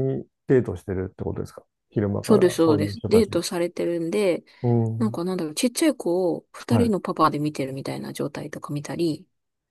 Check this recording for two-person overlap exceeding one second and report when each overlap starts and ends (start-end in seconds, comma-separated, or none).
2.2-3.4